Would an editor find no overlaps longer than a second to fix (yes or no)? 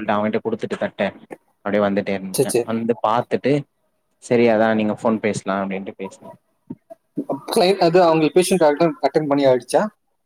yes